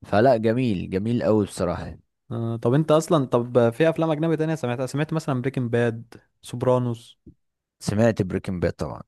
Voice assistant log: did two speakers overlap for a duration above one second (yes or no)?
no